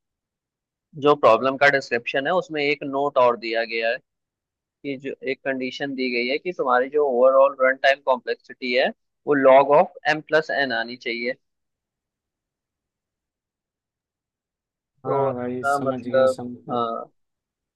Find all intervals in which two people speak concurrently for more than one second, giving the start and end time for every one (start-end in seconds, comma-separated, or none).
15.1-16.8